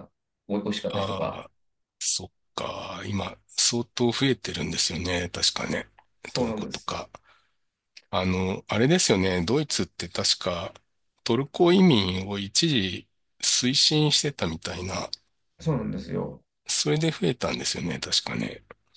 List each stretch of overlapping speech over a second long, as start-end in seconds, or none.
none